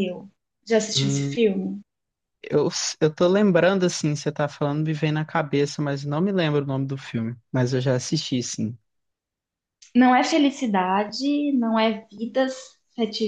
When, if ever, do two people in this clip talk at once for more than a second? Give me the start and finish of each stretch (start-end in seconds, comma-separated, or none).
none